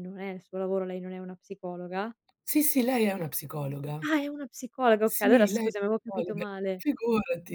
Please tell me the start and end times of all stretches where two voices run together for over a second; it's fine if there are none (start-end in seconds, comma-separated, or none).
5.0-6.8